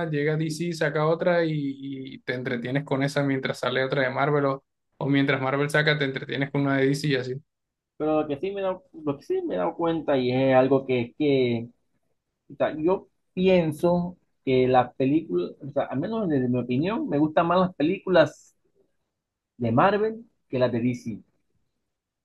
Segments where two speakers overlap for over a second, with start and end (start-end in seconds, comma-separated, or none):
none